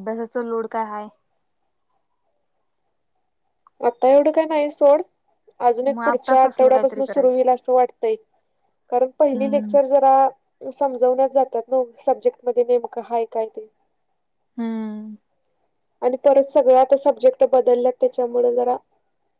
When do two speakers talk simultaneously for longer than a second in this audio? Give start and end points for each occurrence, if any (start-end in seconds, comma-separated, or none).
5.9-7.4